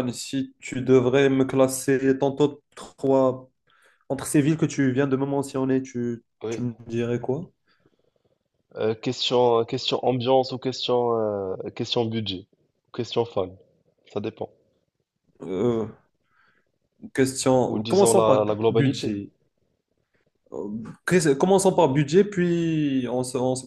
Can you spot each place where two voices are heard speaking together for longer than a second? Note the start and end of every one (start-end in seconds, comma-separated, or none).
17.6-19.2